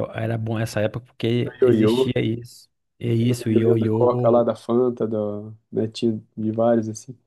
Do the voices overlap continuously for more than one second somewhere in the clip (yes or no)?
yes